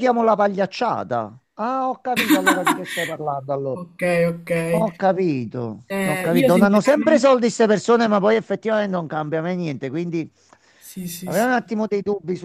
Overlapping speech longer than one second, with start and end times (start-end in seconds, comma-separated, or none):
5.9-7.3